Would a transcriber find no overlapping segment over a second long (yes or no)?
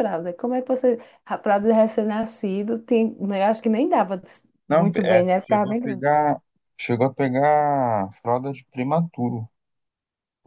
no